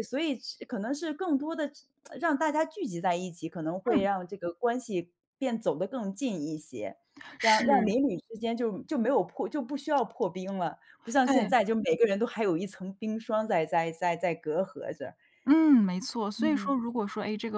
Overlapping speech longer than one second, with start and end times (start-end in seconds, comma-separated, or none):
none